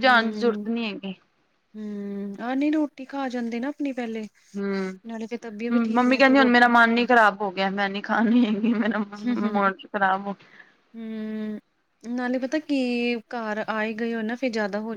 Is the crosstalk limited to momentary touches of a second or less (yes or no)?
no